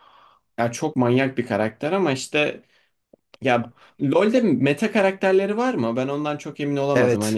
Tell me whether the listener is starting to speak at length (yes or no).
yes